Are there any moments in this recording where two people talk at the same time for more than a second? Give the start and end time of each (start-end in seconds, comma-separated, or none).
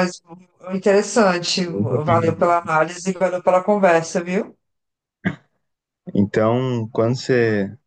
none